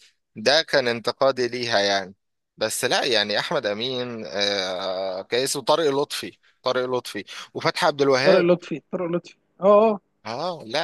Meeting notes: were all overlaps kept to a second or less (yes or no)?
yes